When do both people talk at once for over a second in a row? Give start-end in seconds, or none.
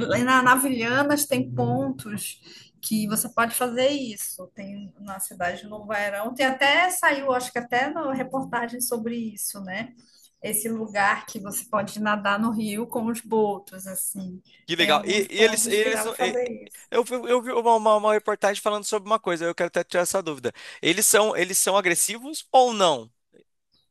14.7-16.4